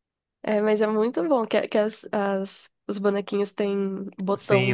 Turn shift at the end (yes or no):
yes